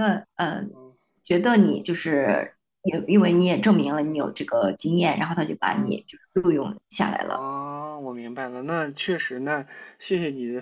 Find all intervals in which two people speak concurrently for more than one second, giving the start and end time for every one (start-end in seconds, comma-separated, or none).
none